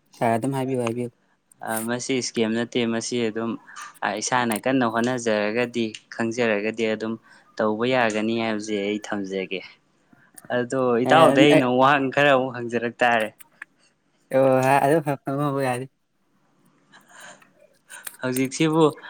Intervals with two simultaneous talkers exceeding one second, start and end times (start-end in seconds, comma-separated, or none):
none